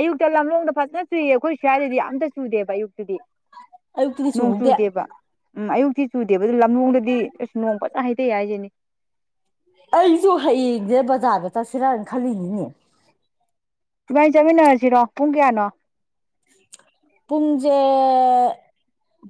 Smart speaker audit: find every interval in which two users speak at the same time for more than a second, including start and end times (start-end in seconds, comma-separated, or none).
none